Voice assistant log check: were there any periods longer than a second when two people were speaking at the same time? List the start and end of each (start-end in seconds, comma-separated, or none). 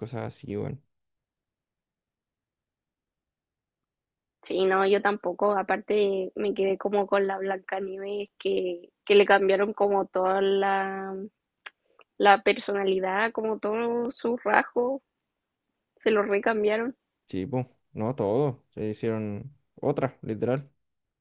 none